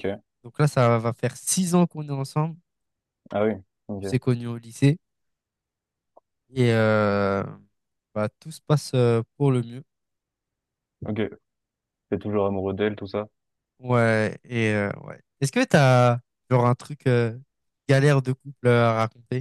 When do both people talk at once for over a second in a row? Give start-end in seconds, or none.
none